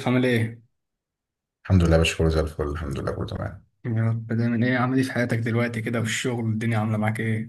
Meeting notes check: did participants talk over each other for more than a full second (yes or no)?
no